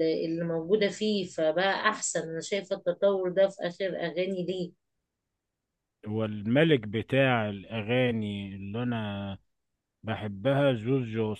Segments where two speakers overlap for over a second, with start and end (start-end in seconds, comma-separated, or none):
none